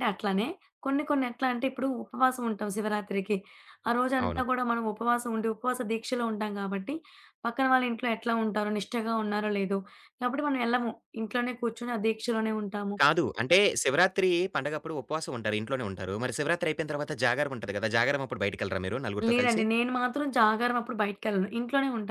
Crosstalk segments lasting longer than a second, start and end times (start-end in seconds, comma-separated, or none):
none